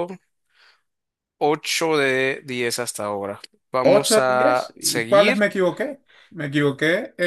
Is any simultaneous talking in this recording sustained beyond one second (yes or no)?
yes